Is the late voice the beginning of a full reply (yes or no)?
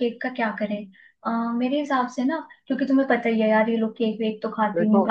no